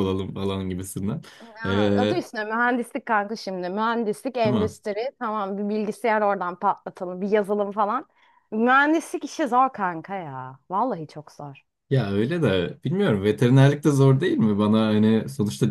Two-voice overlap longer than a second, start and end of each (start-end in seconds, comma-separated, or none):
none